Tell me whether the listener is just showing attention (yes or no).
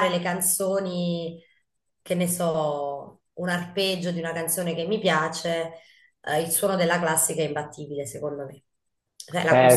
no